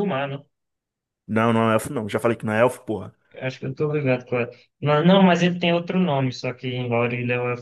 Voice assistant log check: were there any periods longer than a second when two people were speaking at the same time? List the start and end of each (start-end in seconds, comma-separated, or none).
none